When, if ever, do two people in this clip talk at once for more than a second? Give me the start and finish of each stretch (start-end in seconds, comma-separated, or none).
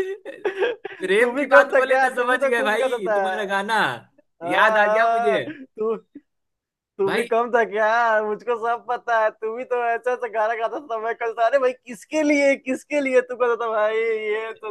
1.0-3.2